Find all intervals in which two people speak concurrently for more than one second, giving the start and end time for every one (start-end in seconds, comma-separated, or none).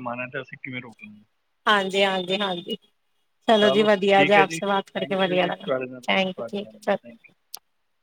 4.2-7.0